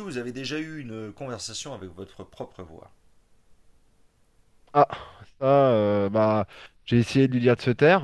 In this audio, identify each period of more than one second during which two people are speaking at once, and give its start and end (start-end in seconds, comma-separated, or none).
none